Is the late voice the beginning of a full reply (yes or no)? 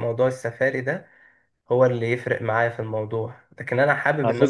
no